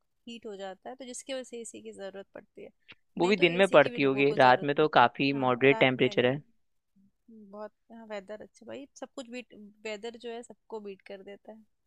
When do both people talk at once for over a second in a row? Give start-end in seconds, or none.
3.2-6.3